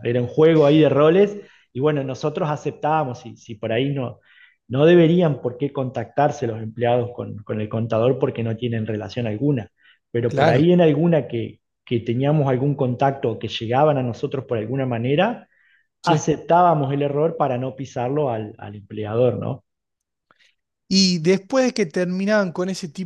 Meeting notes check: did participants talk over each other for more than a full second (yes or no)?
no